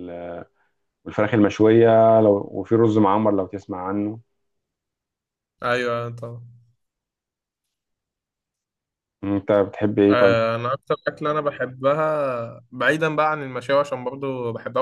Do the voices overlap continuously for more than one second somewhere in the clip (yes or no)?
no